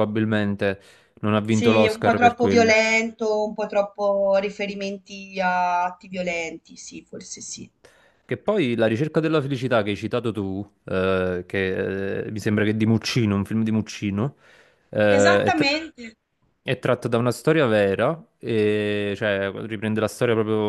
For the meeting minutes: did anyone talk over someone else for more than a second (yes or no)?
yes